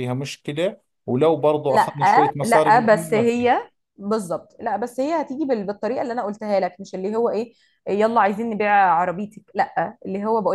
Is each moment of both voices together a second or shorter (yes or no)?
no